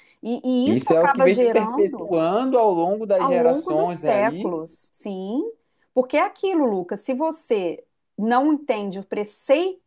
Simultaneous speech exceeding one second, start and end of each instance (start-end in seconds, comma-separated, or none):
0.6-2.1, 3.2-4.5